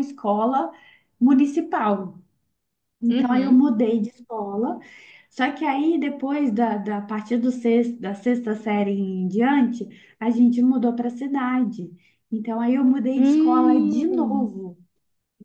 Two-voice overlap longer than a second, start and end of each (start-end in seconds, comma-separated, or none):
13.2-14.5